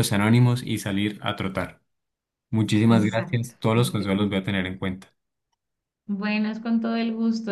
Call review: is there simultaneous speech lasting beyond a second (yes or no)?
yes